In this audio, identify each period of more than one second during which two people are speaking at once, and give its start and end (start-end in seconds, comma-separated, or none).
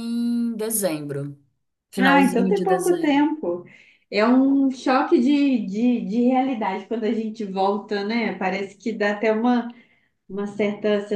2.0-3.3